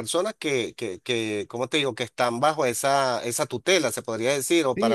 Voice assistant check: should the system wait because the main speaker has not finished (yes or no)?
no